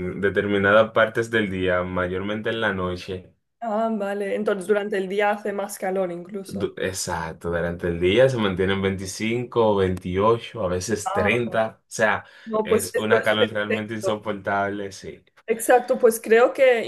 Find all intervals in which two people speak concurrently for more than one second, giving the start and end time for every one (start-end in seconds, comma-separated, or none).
12.6-14.2